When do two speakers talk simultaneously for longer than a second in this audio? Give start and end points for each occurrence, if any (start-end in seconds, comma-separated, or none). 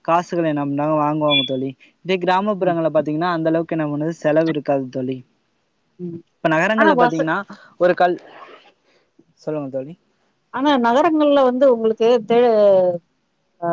none